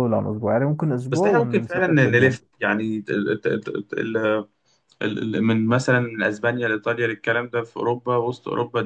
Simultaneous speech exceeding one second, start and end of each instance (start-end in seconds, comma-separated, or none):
1.1-2.4